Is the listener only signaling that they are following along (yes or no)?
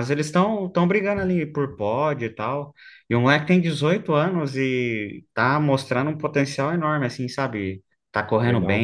yes